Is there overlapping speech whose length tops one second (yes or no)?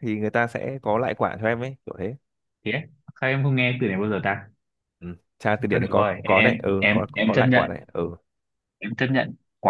yes